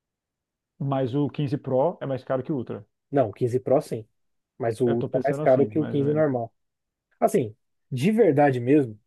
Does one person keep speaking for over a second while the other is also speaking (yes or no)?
yes